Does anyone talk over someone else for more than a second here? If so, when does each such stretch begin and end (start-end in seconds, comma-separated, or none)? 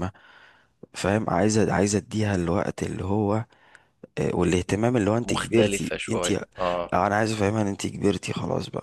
5.2-7.0